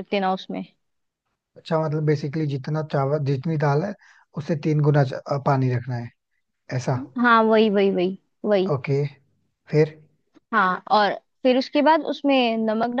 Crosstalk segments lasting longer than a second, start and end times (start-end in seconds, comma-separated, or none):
none